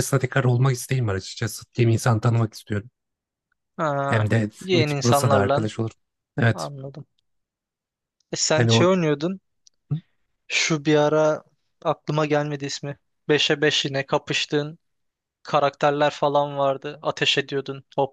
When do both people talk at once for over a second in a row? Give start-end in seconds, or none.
4.1-5.7